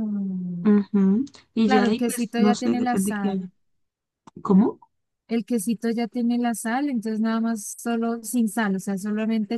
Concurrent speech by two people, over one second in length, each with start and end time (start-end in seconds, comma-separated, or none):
1.6-3.5